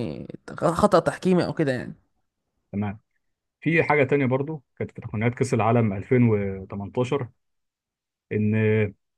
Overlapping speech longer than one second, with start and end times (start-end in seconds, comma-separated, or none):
none